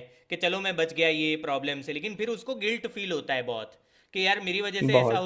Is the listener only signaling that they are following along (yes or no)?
yes